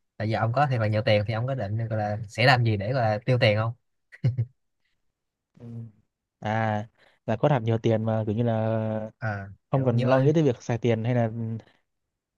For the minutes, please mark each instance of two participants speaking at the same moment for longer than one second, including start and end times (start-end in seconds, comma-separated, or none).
none